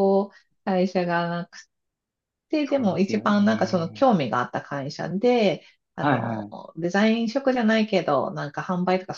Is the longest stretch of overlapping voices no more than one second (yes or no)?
no